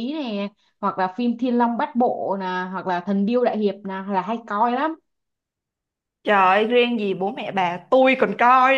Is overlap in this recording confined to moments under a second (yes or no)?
yes